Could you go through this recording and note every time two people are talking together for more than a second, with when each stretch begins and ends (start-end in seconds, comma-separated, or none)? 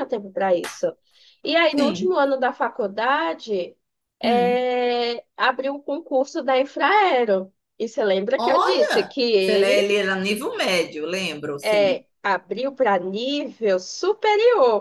8.4-9.9